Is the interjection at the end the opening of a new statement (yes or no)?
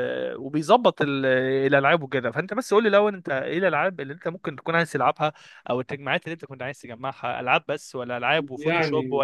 no